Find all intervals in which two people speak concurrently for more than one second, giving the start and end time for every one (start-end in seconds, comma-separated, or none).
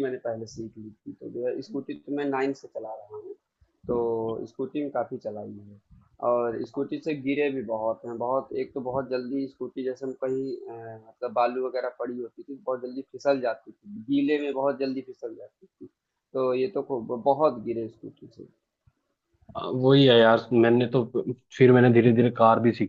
none